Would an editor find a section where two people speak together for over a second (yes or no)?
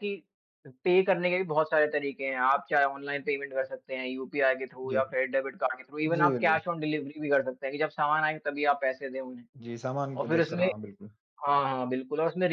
no